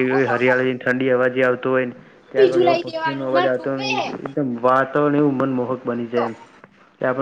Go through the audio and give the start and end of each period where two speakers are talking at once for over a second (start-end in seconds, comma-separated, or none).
2.3-4.0